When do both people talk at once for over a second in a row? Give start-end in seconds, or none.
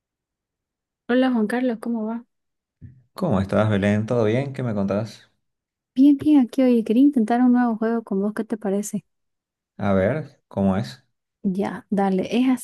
none